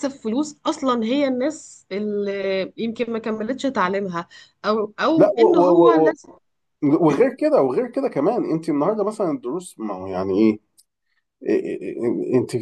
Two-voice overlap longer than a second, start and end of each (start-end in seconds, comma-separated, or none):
none